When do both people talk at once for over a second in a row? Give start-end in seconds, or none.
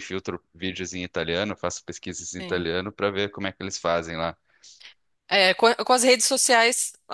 none